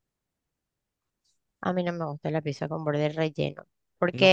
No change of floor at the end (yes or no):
yes